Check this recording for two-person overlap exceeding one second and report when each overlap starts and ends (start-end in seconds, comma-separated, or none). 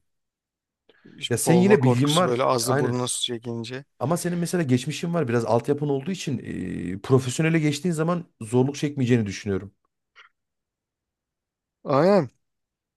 1.4-3.0